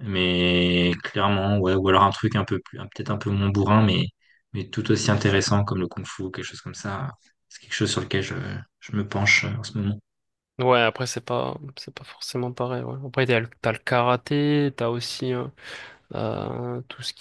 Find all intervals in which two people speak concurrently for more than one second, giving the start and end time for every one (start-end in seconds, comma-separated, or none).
none